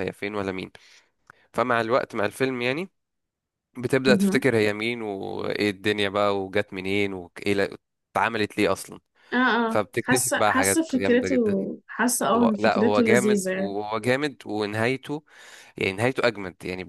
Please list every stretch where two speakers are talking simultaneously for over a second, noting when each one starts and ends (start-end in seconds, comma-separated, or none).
9.7-11.3, 12.3-13.8